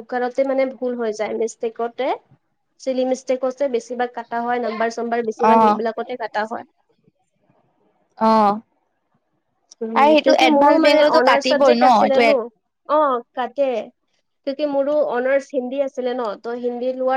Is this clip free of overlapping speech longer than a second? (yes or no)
no